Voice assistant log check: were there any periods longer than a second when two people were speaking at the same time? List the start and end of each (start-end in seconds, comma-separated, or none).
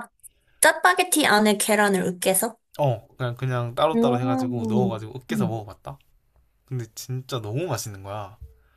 3.9-5.6